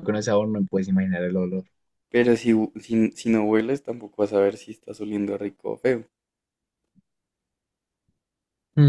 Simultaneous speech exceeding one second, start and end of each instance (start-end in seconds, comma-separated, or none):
none